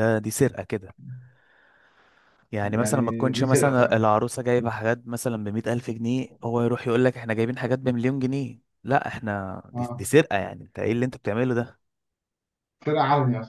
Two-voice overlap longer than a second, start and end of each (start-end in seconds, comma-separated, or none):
2.6-4.0